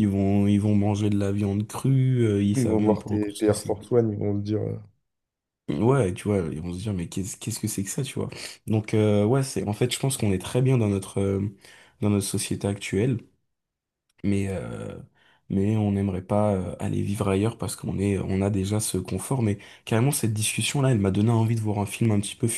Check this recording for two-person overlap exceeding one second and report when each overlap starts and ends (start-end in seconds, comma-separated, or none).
2.5-3.8